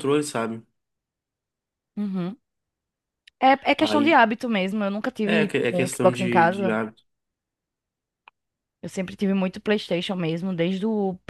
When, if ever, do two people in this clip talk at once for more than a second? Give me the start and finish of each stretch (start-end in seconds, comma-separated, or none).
5.2-6.8